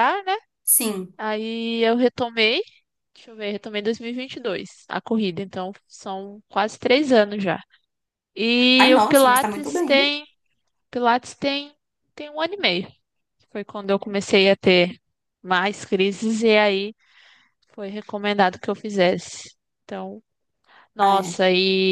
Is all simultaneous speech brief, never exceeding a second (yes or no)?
no